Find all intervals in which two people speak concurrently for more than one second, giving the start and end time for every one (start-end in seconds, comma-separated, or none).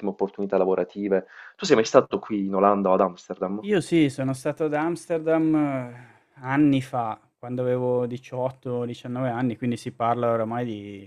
none